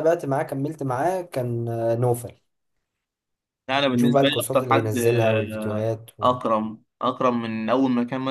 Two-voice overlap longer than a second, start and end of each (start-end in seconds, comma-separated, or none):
3.9-6.4